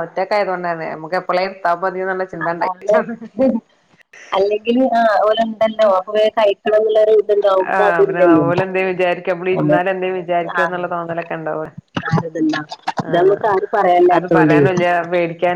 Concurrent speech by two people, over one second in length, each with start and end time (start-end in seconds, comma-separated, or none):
13.1-14.6